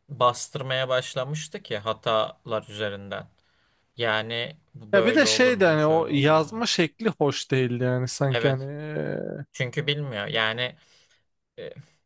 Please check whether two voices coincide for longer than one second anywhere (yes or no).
yes